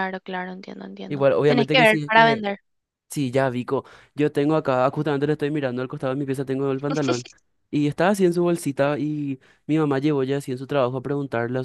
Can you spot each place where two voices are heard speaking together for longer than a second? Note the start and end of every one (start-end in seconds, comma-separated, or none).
1.1-2.5